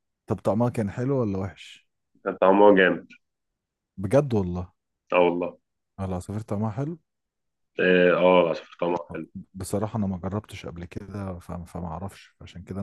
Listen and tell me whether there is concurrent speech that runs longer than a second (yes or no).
no